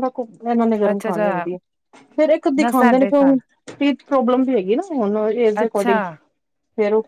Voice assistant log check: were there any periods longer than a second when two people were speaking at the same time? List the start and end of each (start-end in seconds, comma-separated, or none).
none